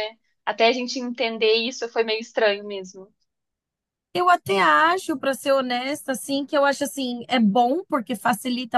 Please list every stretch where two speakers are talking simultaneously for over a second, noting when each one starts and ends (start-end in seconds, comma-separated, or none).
none